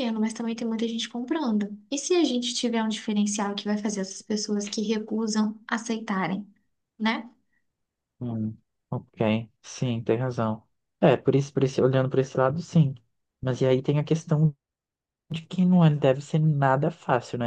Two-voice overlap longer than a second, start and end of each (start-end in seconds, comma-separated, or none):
none